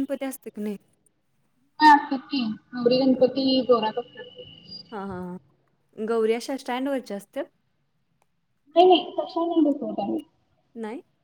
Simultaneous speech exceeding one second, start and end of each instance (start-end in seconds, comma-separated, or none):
none